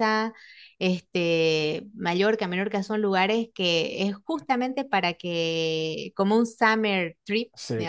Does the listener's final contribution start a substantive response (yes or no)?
no